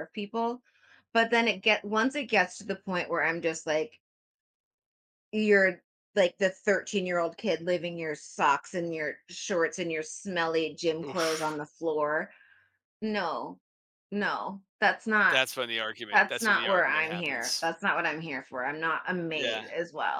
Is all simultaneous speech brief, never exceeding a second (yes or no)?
no